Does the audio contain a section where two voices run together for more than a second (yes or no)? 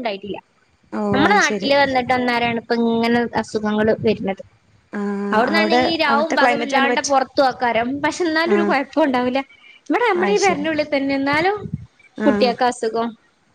yes